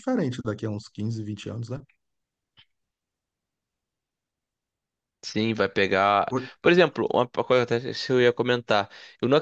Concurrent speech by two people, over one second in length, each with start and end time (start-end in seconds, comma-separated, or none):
none